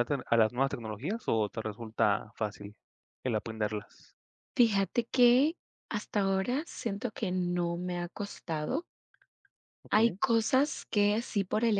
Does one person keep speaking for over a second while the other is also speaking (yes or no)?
no